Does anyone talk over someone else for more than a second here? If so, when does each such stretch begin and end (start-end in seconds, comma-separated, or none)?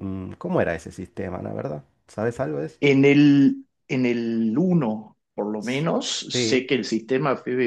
none